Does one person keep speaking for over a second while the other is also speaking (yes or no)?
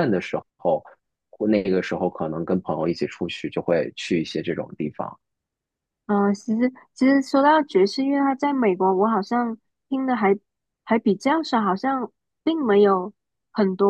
no